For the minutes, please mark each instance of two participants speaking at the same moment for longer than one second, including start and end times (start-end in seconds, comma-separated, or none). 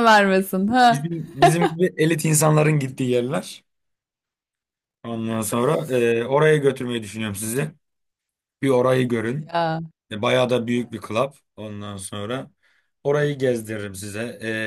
none